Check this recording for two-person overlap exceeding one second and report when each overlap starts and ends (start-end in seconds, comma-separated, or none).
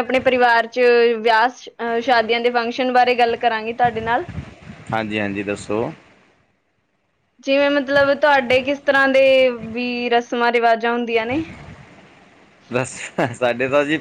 none